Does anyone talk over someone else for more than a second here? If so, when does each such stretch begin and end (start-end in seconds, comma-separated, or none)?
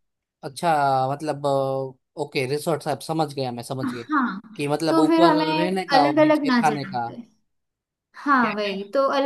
4.9-7.1